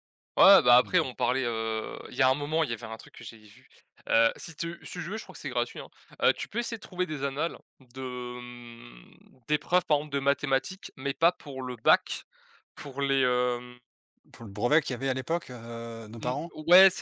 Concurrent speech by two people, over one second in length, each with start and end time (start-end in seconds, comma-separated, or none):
none